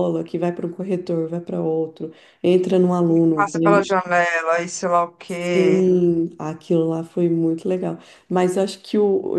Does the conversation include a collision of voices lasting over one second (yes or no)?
no